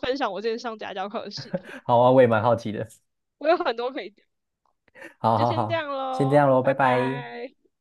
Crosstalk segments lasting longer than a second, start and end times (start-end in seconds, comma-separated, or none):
5.3-7.2